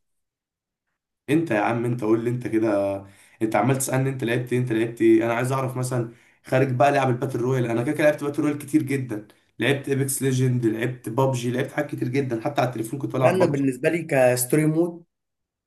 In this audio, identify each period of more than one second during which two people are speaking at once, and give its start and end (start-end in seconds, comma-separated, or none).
none